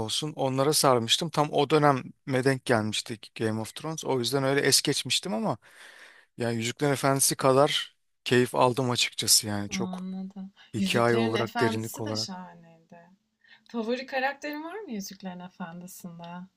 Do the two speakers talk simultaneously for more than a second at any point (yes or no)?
yes